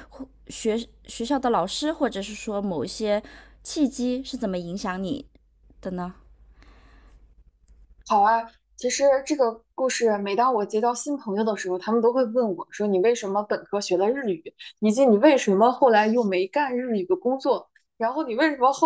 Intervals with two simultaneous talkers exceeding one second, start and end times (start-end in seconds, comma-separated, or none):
none